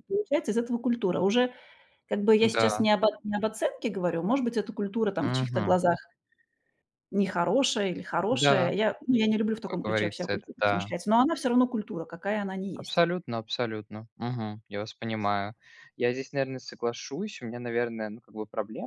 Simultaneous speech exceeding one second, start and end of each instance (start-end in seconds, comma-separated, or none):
9.7-10.9